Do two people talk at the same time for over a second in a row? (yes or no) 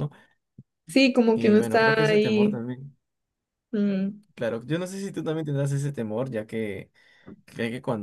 yes